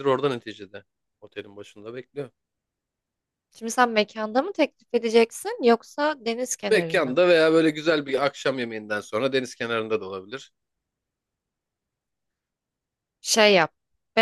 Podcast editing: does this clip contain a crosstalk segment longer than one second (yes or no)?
no